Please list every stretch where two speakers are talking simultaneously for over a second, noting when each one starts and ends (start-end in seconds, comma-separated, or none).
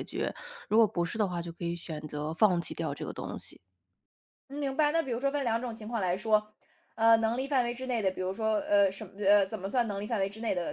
none